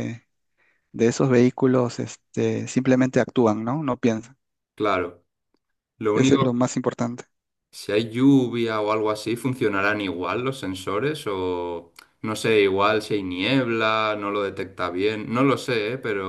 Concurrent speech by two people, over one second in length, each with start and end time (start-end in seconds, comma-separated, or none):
none